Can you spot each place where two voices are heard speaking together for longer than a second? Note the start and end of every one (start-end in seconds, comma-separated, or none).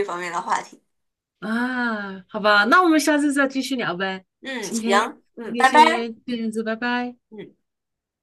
4.6-6.1